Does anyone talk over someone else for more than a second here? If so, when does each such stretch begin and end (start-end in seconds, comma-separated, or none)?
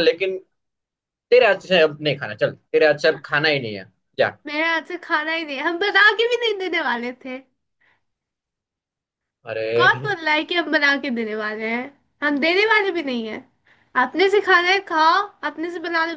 none